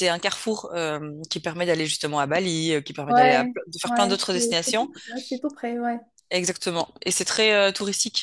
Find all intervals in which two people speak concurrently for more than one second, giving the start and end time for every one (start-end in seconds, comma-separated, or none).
3.1-4.9